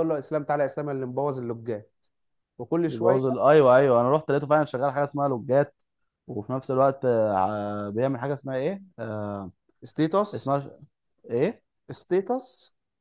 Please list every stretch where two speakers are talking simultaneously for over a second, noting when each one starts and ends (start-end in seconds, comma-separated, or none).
none